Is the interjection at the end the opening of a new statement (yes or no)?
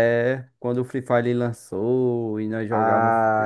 yes